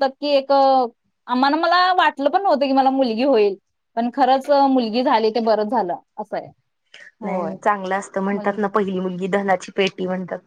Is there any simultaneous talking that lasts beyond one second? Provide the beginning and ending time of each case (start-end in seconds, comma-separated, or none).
none